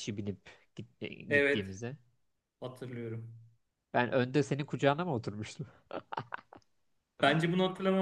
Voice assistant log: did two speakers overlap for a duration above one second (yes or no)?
no